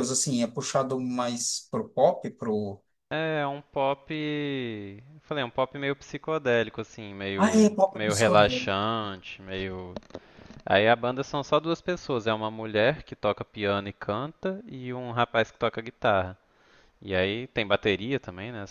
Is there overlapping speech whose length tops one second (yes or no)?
yes